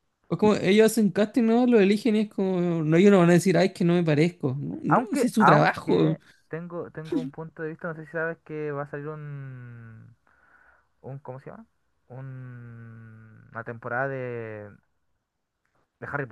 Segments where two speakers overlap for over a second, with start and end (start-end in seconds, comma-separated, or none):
4.9-6.2